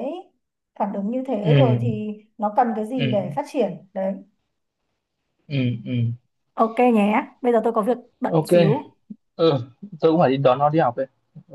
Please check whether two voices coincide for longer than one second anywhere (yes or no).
no